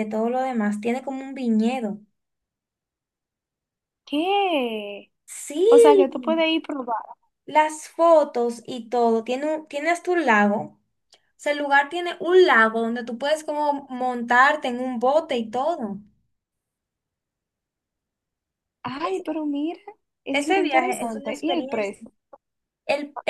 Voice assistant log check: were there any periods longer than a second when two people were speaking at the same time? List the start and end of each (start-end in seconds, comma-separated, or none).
20.3-22.0